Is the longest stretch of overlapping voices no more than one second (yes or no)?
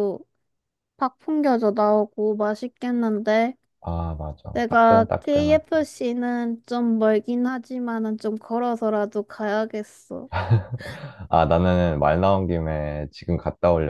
no